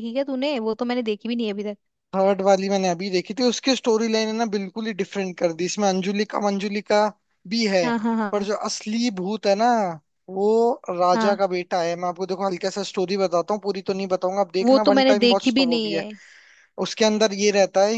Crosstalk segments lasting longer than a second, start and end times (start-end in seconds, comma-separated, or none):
14.6-16.0